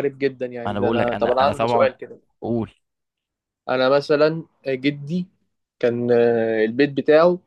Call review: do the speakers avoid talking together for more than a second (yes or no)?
no